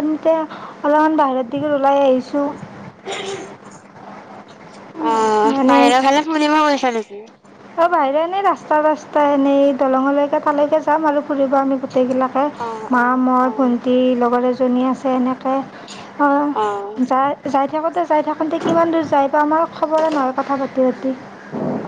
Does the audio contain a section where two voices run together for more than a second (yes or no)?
no